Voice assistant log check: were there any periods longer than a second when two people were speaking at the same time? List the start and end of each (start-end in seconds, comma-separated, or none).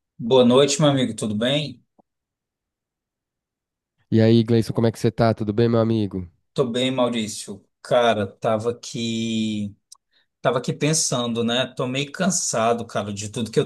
none